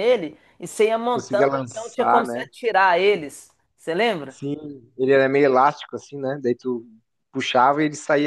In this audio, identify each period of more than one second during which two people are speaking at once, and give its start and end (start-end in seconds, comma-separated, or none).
1.1-2.5